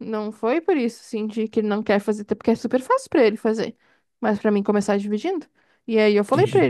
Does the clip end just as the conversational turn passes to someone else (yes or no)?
no